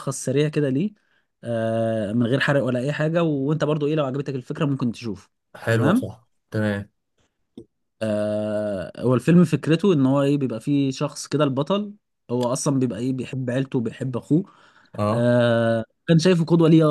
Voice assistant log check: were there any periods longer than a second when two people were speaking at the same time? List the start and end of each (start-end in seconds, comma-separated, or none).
none